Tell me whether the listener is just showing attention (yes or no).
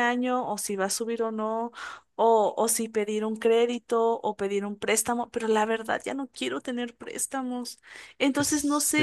no